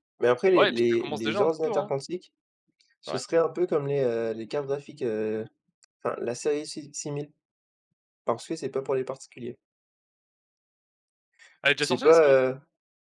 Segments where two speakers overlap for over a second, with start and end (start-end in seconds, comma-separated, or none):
0.5-1.9